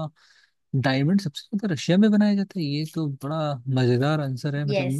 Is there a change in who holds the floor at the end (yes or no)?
yes